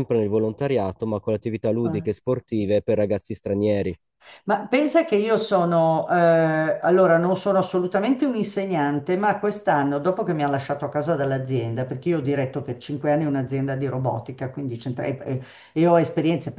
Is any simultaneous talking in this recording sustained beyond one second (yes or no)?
no